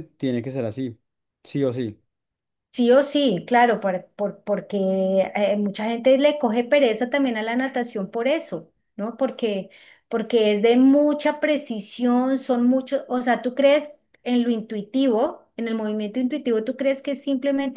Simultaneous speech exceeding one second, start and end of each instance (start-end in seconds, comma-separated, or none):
none